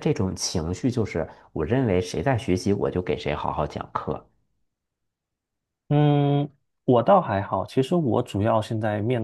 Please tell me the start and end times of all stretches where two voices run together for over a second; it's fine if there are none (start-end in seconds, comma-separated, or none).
none